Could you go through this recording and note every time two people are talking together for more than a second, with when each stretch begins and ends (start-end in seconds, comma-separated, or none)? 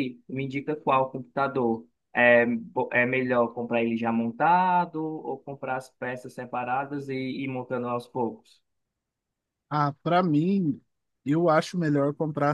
none